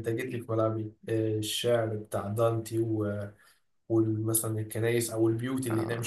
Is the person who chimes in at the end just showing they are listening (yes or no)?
yes